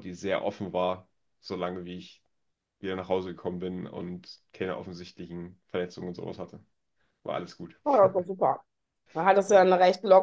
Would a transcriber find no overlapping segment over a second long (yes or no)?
yes